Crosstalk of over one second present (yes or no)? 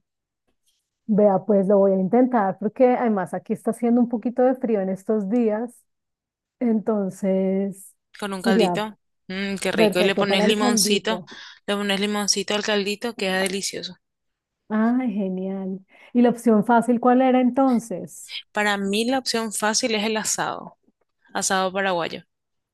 yes